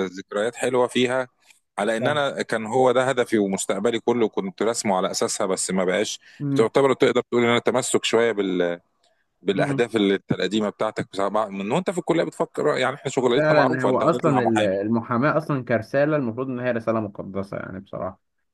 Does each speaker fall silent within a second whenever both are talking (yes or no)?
no